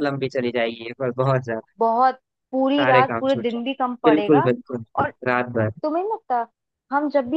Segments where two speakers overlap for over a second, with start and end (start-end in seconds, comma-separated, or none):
2.8-4.4